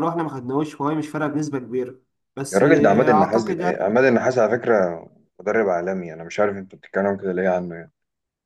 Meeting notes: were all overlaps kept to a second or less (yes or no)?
no